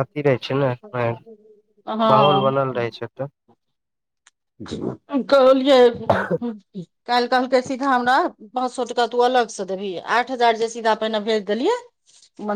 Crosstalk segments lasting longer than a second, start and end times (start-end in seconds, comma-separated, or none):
none